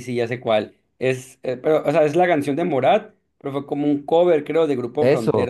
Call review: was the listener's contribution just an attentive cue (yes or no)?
no